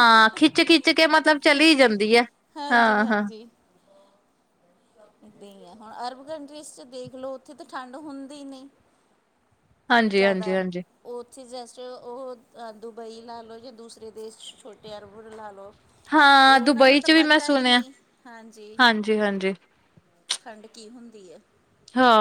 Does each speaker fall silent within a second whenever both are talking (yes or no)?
no